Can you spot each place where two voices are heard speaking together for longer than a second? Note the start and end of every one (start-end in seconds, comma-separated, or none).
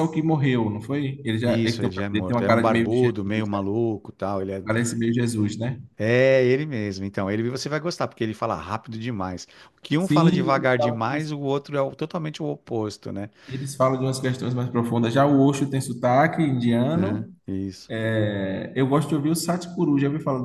1.4-3.6, 10.0-11.3